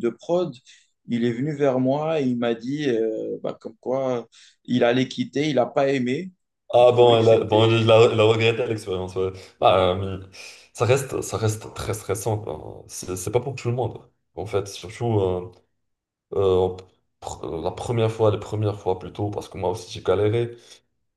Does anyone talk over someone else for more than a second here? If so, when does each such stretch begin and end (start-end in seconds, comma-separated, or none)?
6.8-8.0